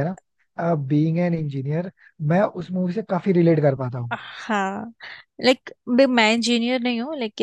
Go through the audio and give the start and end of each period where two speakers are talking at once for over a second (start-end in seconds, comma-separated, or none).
none